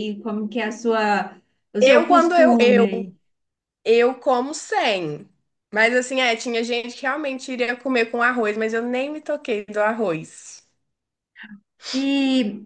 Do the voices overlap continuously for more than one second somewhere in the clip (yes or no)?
yes